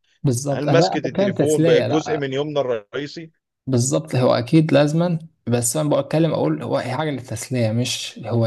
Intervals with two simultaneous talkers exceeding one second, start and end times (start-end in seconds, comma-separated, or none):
0.5-2.3